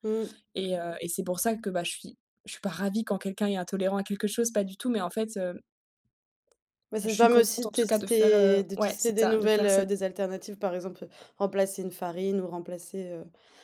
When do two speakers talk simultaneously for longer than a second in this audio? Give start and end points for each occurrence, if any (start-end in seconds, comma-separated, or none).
7.0-9.9